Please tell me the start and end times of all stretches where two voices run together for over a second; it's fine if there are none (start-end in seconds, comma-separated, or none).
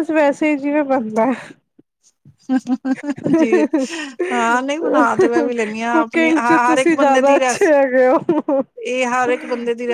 5.9-7.7